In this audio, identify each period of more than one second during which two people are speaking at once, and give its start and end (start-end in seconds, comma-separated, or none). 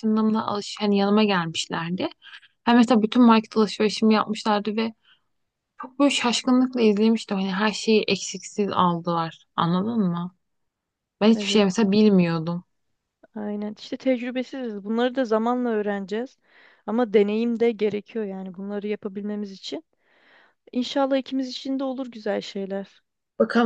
none